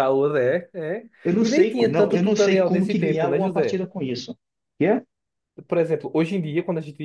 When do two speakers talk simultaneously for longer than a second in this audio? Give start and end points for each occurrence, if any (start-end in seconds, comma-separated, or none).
1.2-3.8